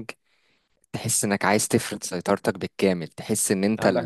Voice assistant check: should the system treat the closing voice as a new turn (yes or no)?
no